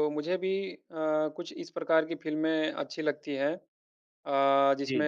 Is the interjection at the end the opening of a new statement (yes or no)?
no